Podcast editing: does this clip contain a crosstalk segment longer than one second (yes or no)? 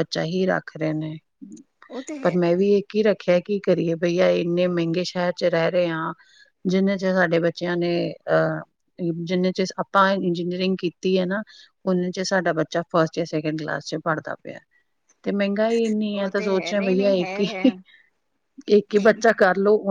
yes